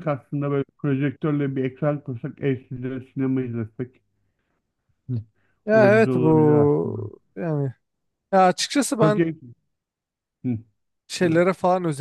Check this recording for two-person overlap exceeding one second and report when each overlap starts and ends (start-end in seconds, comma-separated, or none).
5.7-7.0